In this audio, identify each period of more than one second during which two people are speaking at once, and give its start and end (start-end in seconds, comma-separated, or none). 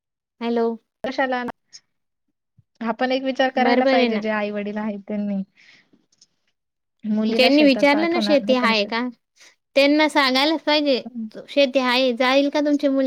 7.4-8.7